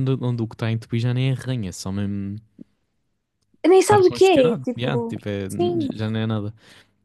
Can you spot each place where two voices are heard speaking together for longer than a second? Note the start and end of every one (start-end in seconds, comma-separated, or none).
3.8-5.1